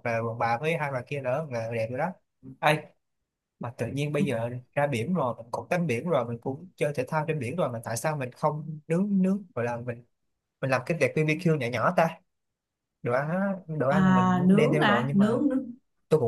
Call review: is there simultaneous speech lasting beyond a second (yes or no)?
yes